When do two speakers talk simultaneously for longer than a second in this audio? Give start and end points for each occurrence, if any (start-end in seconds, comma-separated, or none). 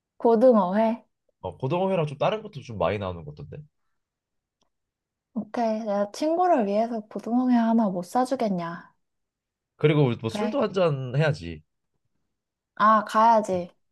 none